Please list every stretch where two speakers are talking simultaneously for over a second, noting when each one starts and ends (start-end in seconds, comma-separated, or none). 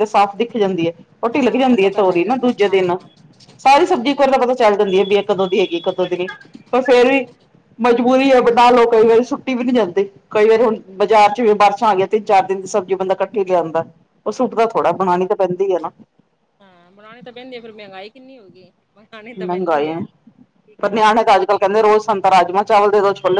1.3-3.0